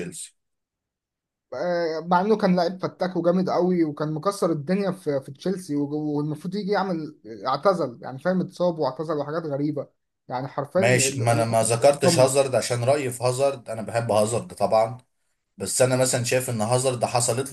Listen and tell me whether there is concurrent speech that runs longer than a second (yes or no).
yes